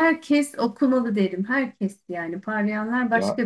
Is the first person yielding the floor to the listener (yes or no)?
yes